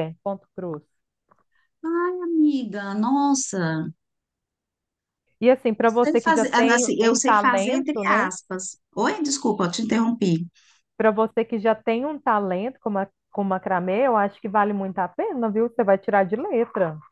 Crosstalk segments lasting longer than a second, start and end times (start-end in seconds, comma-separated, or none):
5.8-8.3